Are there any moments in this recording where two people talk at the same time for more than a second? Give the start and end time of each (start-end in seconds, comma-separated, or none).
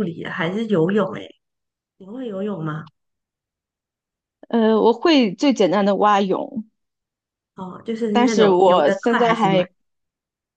8.1-9.7